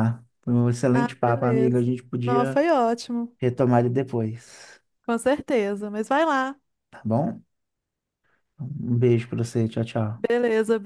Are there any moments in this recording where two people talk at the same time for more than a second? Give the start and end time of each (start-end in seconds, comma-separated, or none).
0.9-2.6